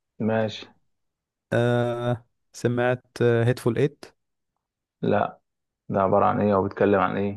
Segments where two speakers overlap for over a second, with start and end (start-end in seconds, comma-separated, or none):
none